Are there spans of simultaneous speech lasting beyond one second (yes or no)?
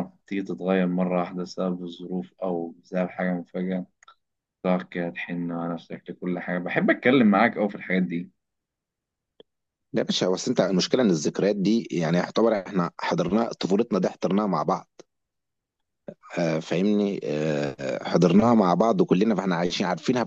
no